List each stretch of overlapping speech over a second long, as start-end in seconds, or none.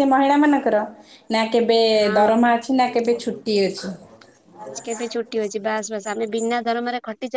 none